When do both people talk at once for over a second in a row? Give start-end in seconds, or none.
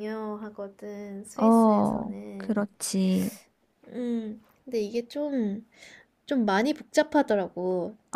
1.4-2.6